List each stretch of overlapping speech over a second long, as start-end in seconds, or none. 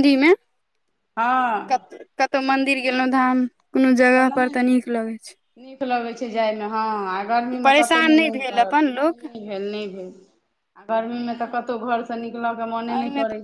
7.6-9.2